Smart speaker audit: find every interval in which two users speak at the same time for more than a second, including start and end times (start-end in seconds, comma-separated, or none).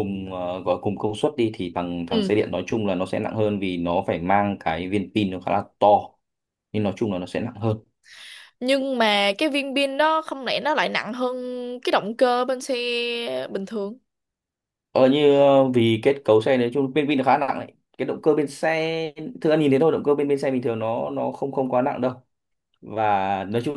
none